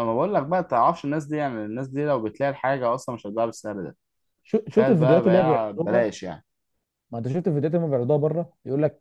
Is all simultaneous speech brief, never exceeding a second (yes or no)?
no